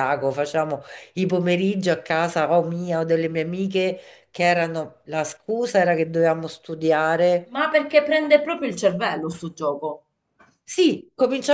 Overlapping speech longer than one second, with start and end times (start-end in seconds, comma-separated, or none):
none